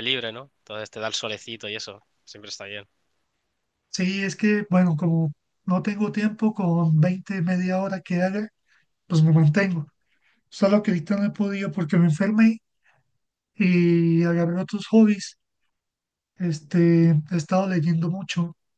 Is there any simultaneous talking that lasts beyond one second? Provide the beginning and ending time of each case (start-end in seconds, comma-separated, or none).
none